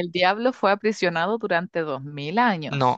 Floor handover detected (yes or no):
no